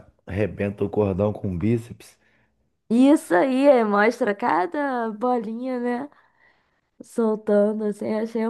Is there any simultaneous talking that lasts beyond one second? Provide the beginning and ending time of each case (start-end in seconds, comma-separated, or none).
none